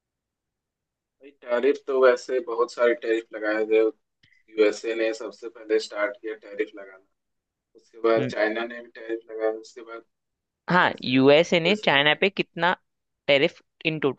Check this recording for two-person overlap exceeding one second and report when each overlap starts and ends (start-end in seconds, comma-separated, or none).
10.7-12.2